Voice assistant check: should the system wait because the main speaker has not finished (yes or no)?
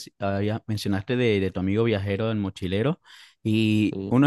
yes